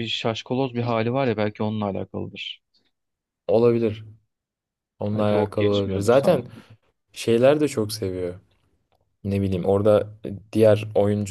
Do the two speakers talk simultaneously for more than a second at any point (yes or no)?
yes